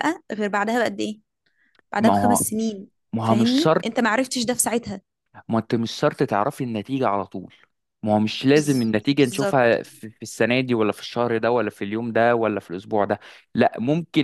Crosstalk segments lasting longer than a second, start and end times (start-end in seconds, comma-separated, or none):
8.5-9.8